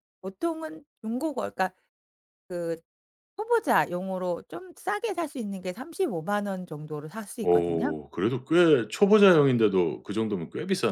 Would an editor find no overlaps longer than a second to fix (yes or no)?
yes